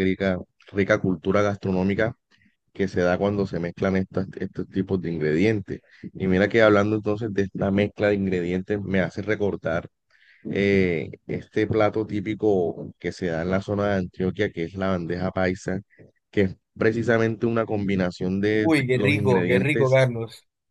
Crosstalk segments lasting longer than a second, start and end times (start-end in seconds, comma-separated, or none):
18.6-20.0